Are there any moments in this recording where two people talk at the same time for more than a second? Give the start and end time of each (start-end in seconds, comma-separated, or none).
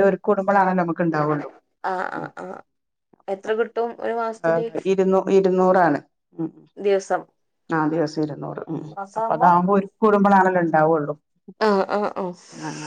none